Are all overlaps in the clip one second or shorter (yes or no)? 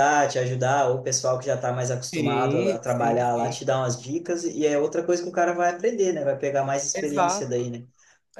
no